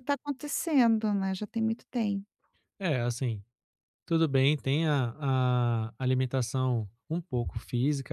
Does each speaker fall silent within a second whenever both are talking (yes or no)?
yes